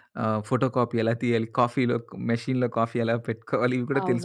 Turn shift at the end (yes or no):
yes